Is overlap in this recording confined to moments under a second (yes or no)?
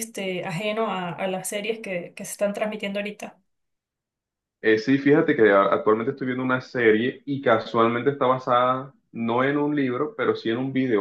yes